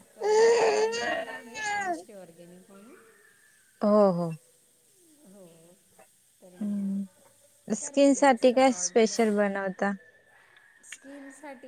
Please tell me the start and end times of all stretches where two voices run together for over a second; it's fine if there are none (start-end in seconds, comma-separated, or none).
6.6-8.7